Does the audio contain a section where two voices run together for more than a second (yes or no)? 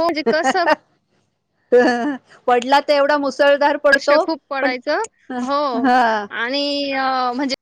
no